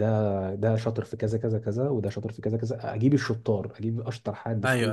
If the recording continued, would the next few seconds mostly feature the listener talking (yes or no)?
no